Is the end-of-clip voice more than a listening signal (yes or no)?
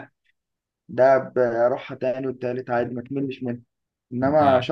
no